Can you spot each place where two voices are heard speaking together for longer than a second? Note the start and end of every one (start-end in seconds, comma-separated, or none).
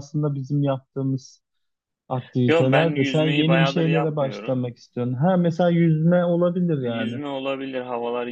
2.5-4.7